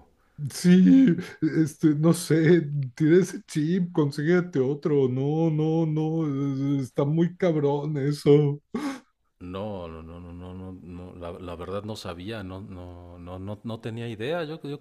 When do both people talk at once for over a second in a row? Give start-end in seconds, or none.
none